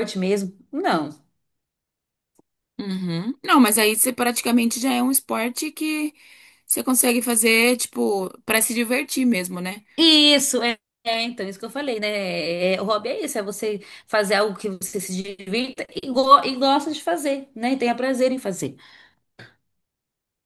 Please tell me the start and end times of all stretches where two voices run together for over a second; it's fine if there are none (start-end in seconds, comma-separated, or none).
none